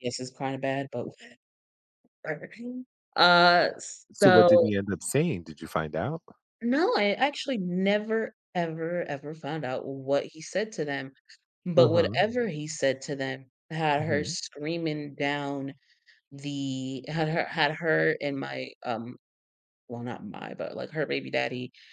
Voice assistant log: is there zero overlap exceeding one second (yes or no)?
yes